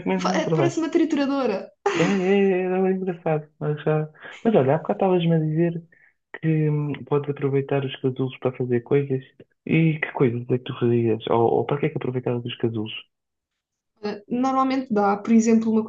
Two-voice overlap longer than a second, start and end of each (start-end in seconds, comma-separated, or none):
none